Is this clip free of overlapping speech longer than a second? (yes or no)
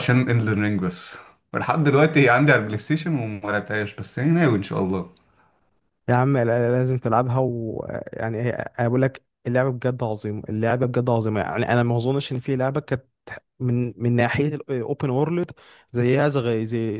yes